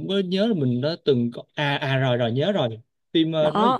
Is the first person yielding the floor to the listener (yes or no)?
no